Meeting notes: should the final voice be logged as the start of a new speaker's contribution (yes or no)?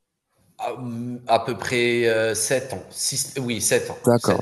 yes